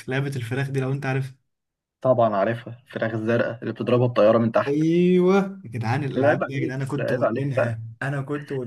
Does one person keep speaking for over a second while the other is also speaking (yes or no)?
yes